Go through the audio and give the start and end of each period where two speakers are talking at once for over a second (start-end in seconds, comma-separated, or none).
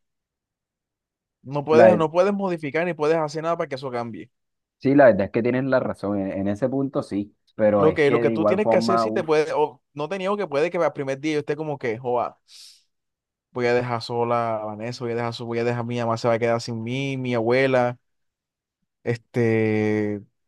7.8-9.3